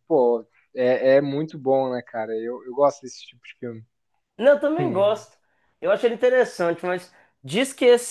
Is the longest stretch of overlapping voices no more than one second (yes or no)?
yes